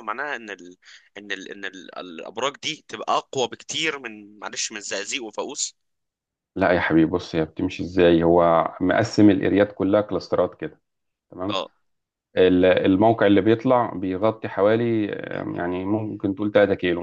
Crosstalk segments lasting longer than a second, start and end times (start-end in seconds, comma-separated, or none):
none